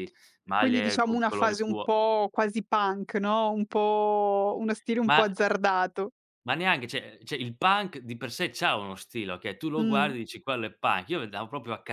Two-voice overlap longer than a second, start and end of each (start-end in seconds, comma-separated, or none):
0.6-1.9